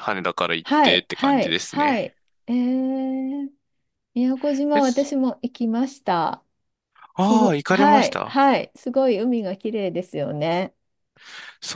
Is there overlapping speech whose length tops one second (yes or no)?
yes